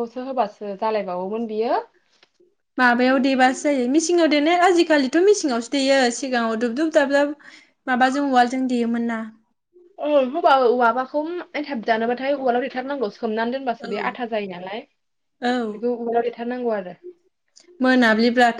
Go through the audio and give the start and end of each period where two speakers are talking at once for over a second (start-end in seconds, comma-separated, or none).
none